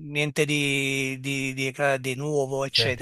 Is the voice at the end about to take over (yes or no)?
yes